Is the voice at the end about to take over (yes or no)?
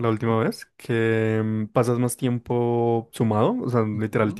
no